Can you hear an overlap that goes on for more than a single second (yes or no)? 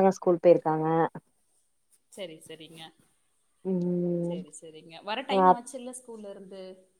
no